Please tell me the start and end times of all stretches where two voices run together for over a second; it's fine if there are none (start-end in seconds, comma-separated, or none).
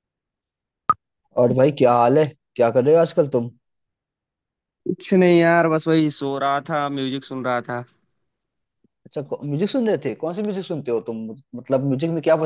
none